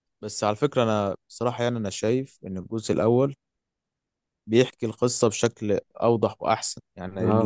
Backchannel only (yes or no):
no